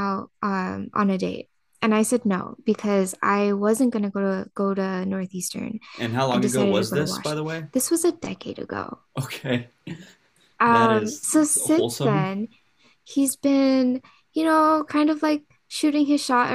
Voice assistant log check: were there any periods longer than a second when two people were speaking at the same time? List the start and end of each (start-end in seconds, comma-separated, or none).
6.3-7.7, 10.7-12.3